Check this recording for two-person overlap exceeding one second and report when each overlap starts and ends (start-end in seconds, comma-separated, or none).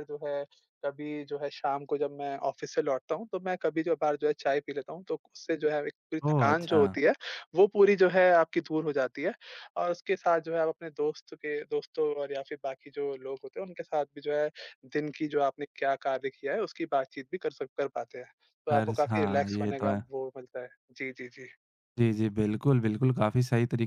18.7-20.0